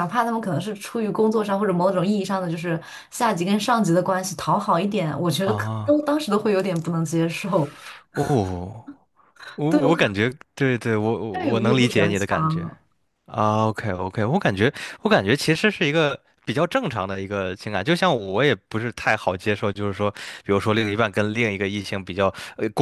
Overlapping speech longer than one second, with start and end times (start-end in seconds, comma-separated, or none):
11.3-12.7